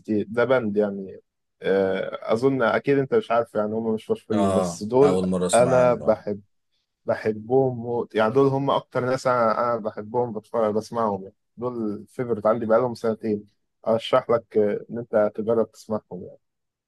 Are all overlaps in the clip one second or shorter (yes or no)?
no